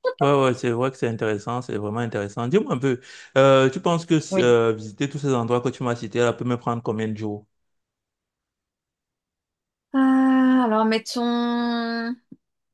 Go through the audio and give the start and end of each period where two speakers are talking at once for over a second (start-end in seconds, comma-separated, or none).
none